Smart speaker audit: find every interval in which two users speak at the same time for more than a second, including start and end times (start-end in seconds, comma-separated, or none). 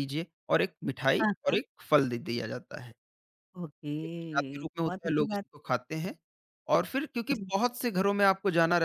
4.0-5.5